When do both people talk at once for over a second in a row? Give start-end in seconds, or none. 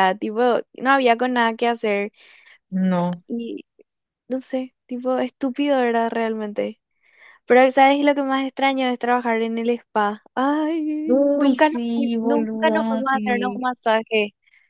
11.4-13.6